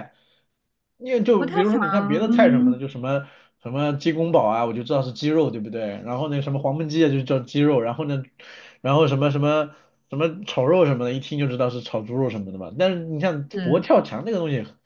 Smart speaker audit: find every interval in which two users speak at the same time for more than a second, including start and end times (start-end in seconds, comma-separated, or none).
1.4-2.8